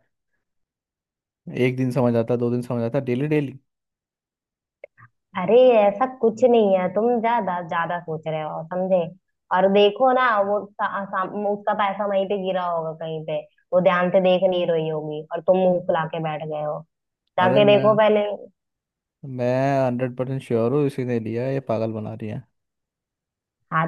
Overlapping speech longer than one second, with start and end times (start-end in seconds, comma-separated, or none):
none